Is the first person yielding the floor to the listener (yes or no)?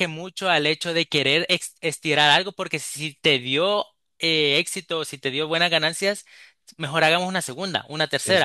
no